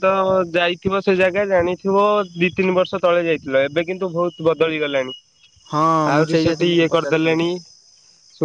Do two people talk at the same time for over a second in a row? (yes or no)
yes